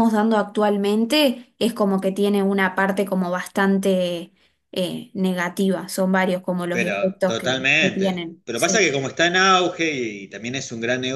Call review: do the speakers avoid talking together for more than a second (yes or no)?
no